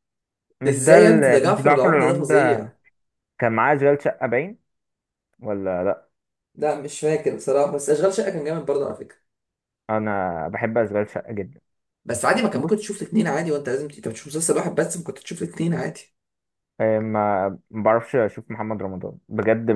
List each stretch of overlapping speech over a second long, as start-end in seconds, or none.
0.7-2.6